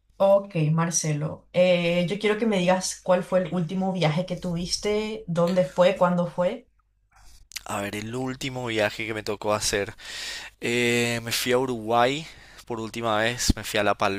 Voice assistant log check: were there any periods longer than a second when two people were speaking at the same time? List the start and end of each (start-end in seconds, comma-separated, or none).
none